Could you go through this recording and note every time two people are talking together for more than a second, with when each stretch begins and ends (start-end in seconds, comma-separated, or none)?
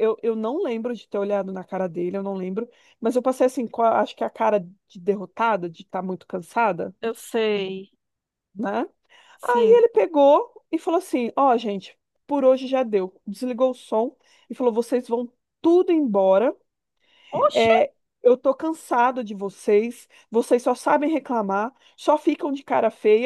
none